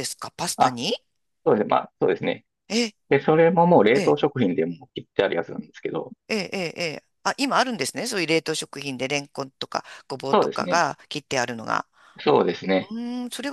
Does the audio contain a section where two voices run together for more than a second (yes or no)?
no